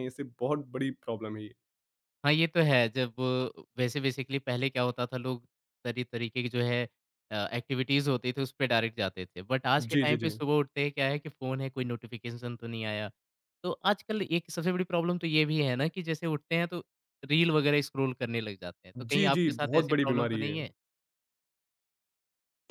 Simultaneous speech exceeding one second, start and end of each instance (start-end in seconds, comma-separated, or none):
19.0-20.6